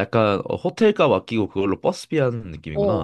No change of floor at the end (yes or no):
no